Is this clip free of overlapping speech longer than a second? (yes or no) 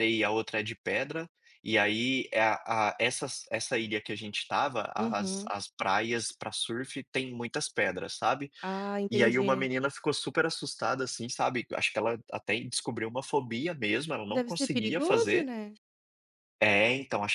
no